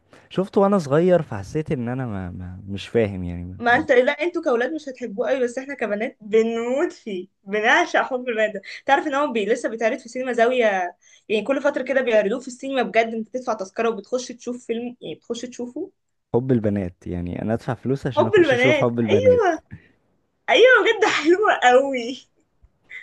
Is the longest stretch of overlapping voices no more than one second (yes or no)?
no